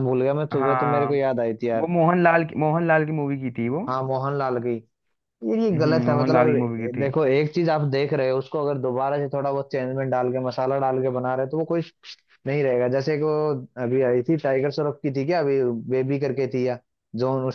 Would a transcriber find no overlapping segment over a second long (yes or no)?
no